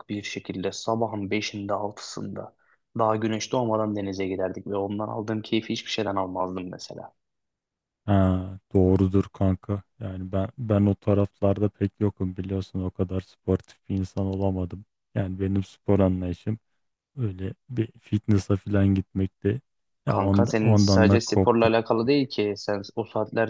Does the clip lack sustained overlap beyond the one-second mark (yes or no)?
no